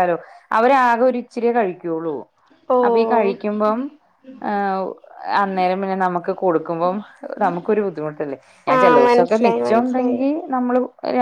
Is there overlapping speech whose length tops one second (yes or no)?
yes